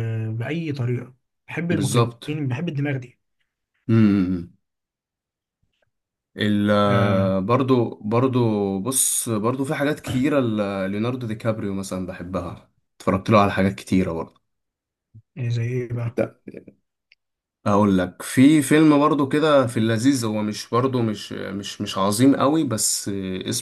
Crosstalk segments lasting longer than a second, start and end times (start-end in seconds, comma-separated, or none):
none